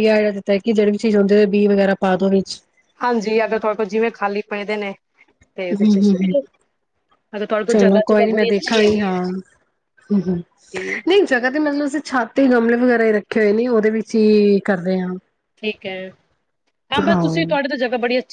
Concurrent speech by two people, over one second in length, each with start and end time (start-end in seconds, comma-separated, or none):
7.7-9.2